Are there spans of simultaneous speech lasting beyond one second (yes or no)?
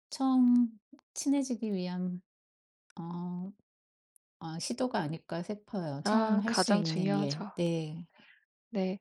yes